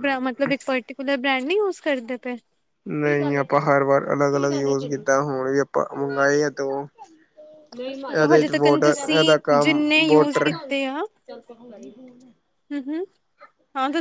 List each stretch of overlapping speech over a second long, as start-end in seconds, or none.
8.2-10.5